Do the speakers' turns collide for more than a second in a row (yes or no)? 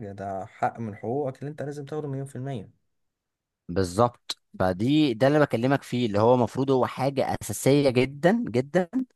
no